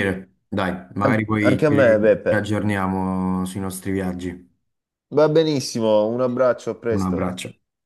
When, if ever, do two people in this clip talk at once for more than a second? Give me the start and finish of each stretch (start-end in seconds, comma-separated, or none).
1.0-2.5